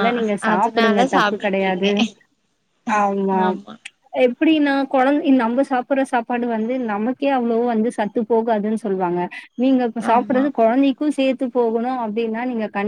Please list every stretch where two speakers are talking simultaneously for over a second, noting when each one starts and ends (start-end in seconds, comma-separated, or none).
0.5-1.9